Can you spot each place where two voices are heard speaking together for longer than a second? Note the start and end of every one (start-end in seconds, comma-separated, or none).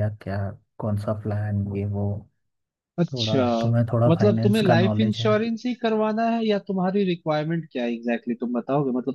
4.1-5.3